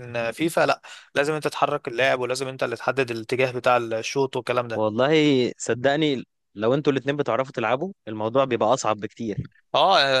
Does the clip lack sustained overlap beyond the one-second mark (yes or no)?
yes